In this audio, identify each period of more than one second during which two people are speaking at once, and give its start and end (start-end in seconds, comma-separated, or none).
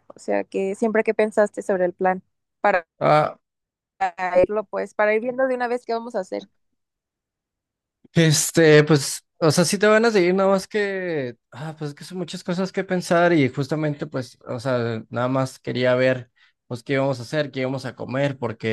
none